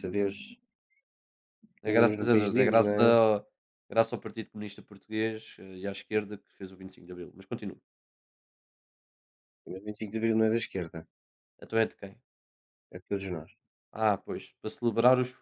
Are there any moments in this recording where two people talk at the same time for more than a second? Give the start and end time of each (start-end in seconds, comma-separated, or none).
1.9-3.1